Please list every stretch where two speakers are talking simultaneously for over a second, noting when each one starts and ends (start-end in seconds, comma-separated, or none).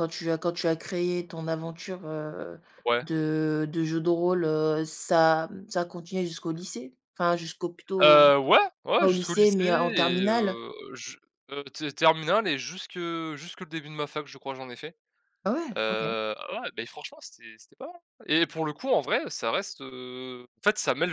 9.0-10.6